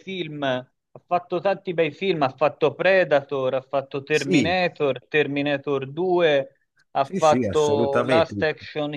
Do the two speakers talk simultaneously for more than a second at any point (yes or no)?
yes